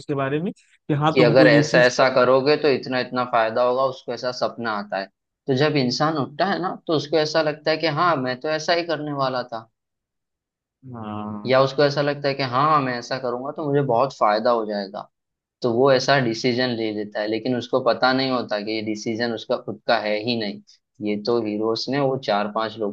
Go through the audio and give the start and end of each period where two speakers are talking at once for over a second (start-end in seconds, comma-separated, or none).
1.1-2.5